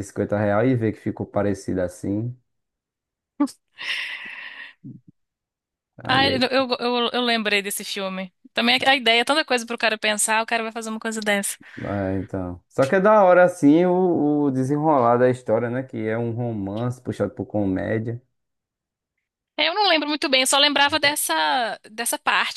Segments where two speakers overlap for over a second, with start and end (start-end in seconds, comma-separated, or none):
none